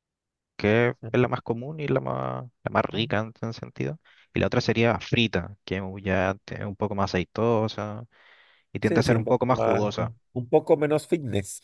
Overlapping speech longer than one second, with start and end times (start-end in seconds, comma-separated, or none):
8.8-10.1